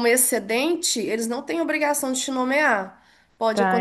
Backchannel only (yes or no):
yes